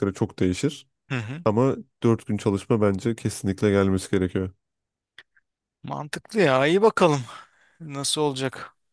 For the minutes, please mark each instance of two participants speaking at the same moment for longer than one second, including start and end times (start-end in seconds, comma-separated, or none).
none